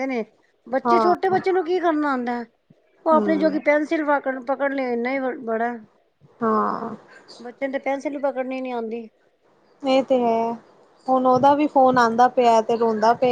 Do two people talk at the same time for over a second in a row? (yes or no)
no